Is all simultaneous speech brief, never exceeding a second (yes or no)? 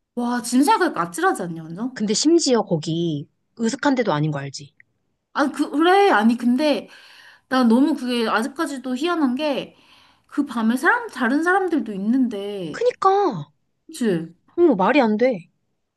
yes